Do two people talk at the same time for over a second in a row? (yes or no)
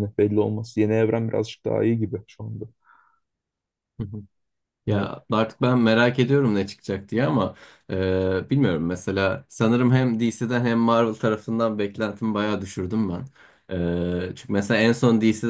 no